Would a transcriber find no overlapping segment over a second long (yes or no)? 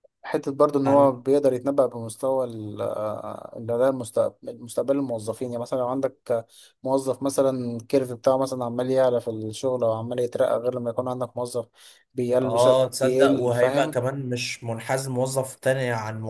no